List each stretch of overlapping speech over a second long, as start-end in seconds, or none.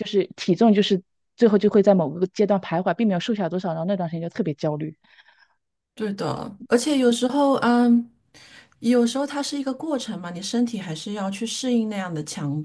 none